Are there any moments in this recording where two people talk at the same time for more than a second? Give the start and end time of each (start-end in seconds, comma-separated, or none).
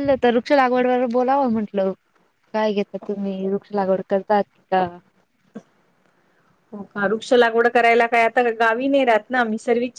none